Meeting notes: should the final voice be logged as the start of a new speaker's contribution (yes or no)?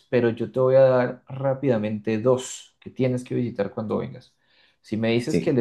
no